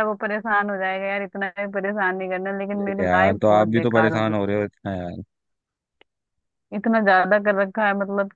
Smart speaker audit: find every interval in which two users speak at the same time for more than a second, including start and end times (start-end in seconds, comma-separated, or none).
2.7-4.3